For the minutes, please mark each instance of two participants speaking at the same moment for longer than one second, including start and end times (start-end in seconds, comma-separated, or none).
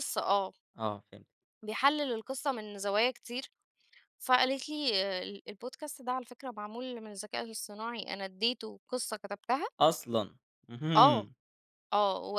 none